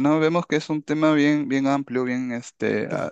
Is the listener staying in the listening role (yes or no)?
yes